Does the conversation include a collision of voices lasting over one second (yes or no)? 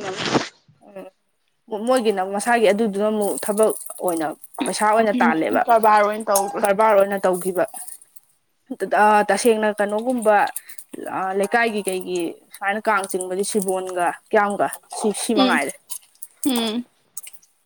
no